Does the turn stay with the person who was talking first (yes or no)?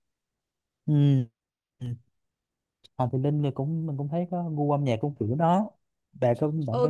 no